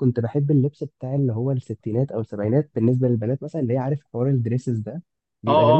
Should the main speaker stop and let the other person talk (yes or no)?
yes